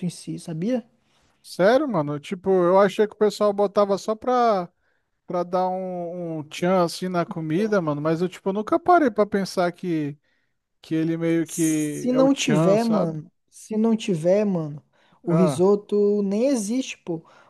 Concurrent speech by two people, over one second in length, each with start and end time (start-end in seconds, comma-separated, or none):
11.4-13.2